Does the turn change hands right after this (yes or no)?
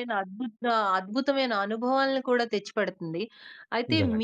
no